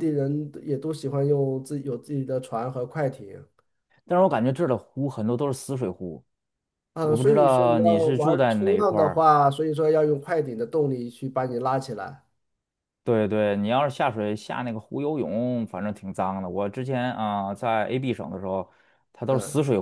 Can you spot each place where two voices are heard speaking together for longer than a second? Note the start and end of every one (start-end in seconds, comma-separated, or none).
7.0-9.2